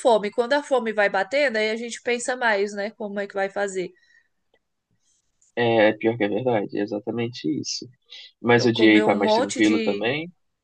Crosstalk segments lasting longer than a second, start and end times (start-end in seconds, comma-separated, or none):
8.5-10.1